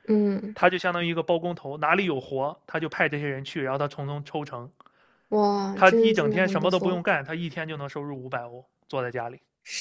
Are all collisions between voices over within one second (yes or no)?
no